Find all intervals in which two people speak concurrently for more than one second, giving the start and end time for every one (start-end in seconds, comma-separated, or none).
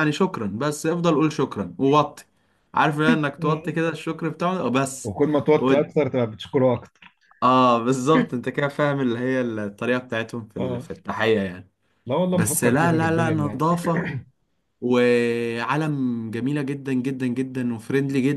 12.3-13.7